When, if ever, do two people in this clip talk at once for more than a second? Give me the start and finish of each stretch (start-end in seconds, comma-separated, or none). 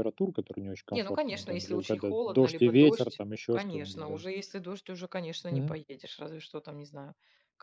0.9-4.2